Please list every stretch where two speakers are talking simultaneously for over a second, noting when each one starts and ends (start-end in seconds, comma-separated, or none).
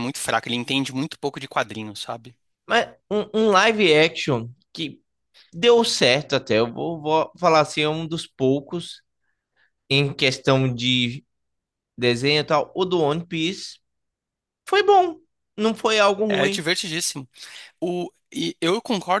none